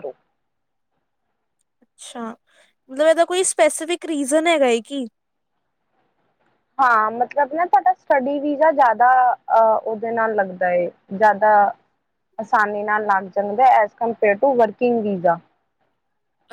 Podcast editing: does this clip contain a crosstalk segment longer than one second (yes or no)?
no